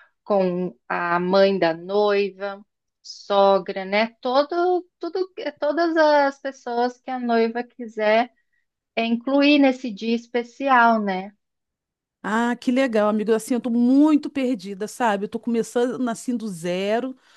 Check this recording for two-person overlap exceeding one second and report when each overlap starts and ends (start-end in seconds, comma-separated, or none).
none